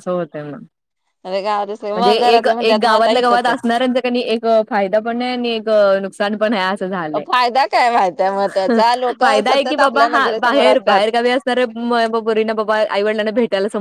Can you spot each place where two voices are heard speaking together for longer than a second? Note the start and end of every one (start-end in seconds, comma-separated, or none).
1.9-3.5, 9.2-11.0